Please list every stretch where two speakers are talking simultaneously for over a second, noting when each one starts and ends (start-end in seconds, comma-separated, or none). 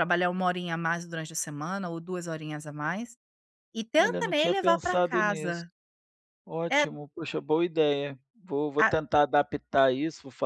4.0-5.7